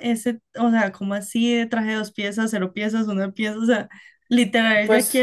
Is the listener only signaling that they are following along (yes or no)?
yes